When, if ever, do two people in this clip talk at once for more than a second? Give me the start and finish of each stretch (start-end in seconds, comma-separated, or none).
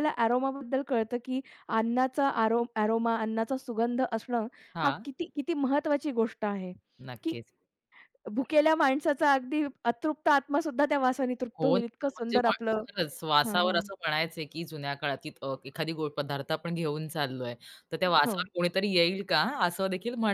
11.6-12.8